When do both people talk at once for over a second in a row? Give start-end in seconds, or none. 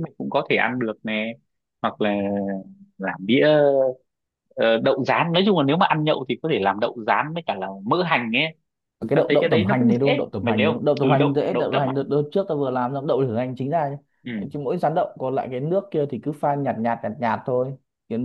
9.1-11.9